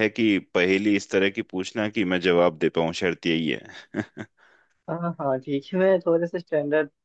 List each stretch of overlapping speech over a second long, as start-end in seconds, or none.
none